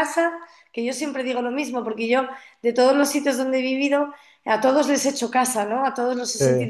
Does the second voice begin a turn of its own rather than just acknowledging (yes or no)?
no